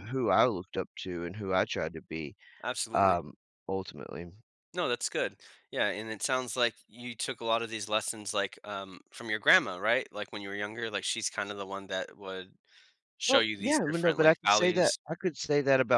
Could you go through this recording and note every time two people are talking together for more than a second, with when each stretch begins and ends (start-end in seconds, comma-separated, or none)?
13.3-15.0